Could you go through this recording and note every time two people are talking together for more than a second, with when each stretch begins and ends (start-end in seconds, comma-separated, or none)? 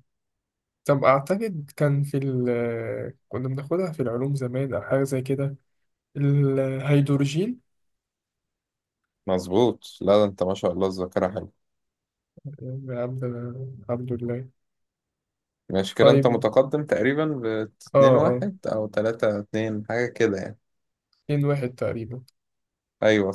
none